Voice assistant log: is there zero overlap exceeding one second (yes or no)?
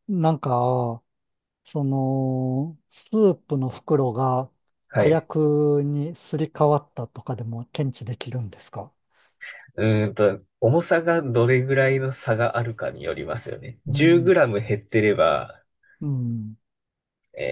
yes